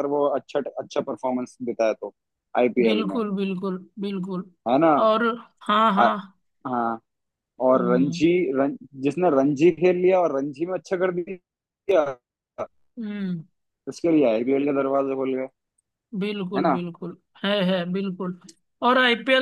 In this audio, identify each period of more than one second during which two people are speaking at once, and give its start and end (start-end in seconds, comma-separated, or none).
none